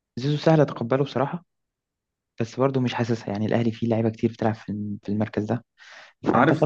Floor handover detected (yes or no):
yes